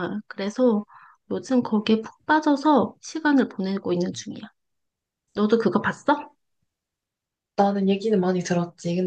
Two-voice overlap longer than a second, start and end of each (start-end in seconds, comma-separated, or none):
none